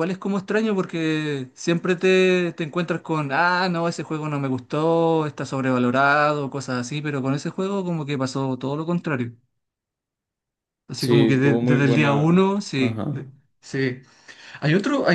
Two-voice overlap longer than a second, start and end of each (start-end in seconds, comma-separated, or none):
11.0-13.2